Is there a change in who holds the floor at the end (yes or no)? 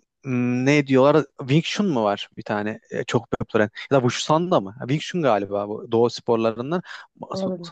no